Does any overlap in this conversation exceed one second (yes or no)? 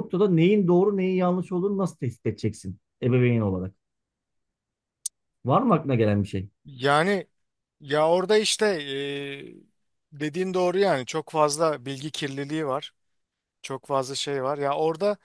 no